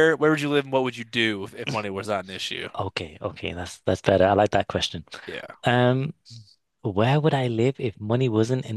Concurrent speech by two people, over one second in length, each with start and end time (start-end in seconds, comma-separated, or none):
none